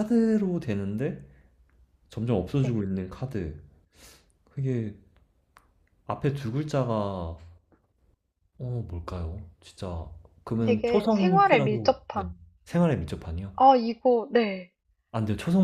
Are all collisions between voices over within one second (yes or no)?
no